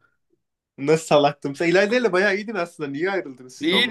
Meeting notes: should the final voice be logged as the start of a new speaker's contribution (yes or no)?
yes